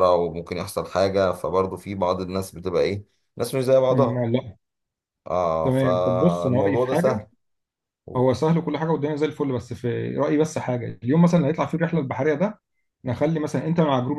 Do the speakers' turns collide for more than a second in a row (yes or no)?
yes